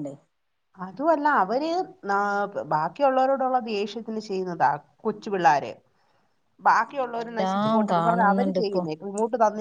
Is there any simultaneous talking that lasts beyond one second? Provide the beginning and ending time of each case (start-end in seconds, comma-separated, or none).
6.9-8.8